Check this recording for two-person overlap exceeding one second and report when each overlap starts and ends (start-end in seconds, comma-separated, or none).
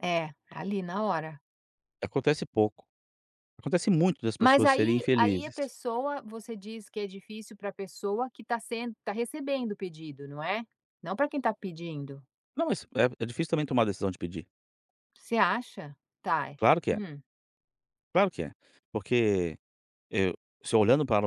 4.4-5.7